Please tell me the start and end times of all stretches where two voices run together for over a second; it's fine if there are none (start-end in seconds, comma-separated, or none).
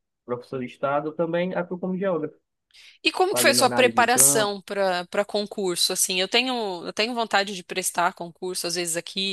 3.3-4.5